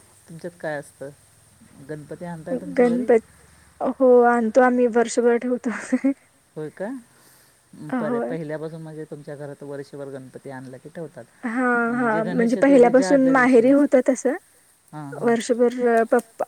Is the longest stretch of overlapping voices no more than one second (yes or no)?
no